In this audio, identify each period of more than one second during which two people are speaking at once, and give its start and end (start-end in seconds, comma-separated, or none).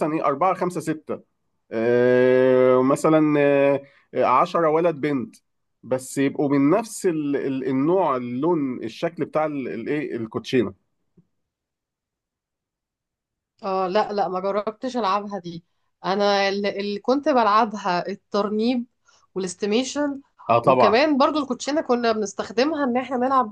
none